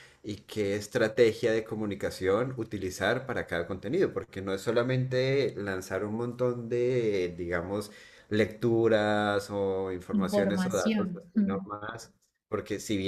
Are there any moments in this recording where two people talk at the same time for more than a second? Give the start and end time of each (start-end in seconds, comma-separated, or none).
10.1-11.7